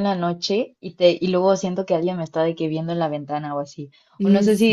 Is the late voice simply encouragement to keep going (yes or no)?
yes